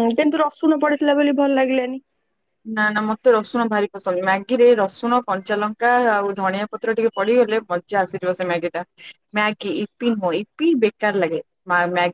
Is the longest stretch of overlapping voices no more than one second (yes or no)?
yes